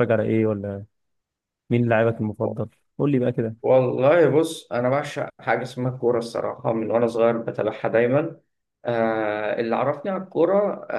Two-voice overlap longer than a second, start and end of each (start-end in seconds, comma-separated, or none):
none